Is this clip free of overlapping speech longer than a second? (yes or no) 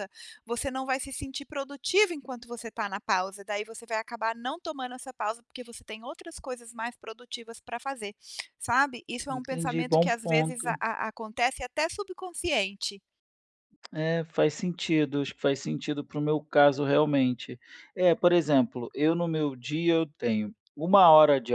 no